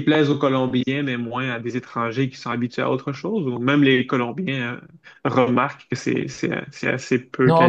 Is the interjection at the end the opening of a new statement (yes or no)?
yes